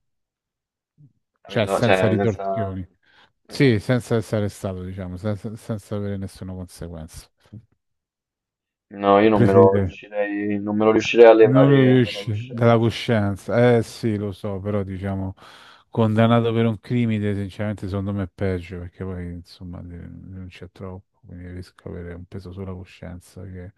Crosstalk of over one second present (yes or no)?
yes